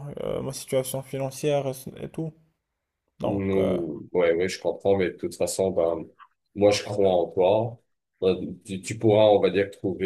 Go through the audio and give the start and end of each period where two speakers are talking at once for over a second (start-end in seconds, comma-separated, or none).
none